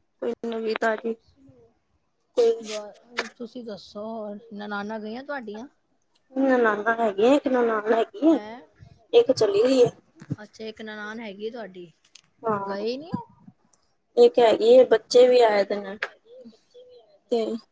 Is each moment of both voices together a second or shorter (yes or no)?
yes